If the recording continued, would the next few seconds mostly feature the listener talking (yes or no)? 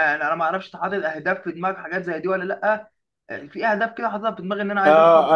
yes